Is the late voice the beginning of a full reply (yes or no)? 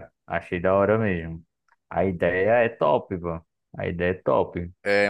yes